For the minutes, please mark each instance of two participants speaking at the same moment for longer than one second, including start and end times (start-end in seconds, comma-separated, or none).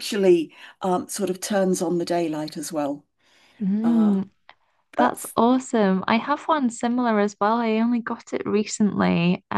none